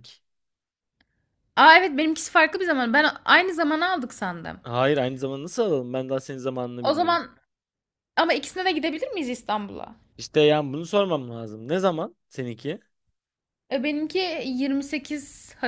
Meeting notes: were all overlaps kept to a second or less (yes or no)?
yes